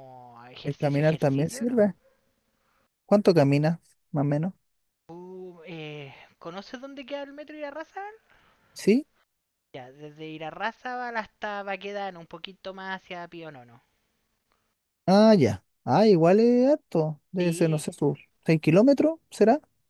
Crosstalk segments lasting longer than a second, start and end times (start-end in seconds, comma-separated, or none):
0.6-1.9